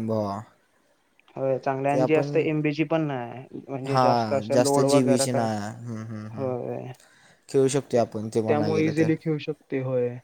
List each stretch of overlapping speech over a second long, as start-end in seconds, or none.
3.9-5.5